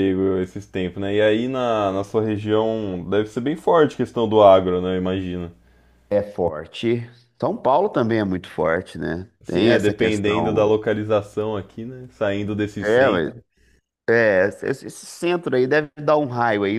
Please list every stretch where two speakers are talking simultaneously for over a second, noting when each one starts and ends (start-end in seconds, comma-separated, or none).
9.4-10.8